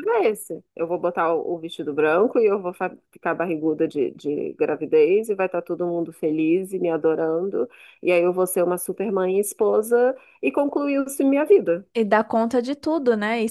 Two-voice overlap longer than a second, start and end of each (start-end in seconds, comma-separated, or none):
none